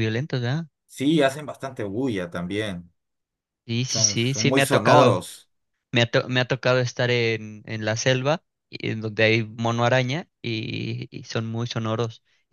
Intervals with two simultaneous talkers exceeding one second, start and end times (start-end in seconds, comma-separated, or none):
3.9-5.2